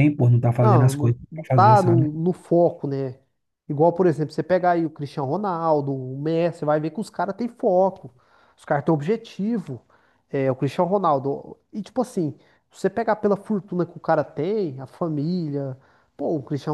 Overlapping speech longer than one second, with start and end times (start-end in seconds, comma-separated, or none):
0.6-2.1